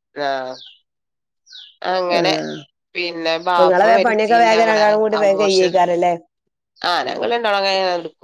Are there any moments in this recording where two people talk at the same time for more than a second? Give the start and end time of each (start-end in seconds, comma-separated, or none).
3.6-5.7